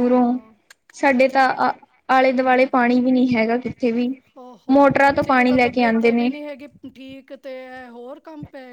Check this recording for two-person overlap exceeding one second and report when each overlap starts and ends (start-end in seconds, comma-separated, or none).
4.7-6.3